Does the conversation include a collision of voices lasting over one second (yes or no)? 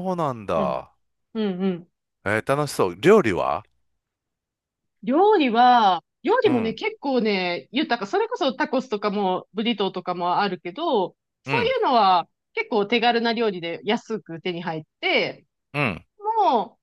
no